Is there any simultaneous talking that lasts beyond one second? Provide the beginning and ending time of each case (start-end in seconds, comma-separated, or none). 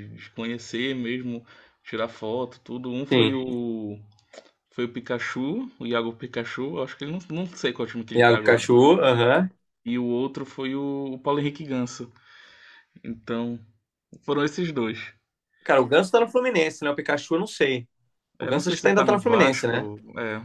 18.4-19.9